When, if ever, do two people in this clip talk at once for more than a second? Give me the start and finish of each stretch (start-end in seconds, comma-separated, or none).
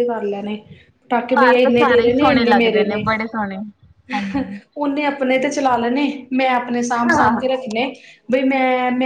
1.4-3.0